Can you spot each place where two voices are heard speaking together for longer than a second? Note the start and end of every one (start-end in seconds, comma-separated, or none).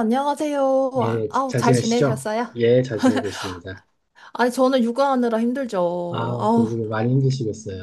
1.0-2.5